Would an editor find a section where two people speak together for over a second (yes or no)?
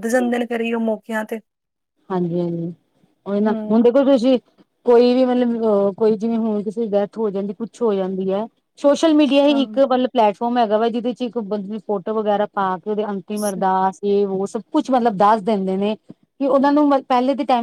no